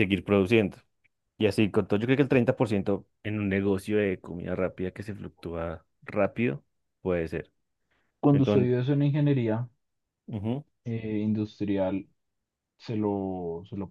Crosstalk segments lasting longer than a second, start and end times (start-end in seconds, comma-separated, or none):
none